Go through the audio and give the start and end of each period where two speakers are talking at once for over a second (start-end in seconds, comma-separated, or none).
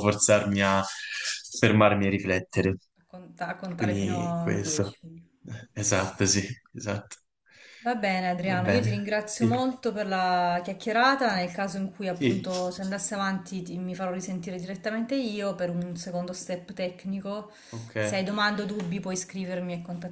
3.8-5.0, 8.3-9.6